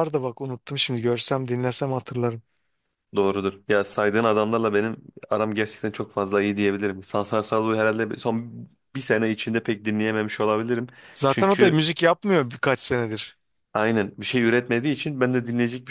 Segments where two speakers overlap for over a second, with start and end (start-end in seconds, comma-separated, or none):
none